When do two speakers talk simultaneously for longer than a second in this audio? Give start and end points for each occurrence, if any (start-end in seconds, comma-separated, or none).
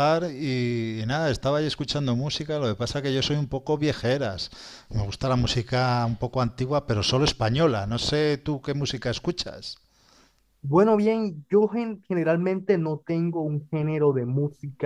none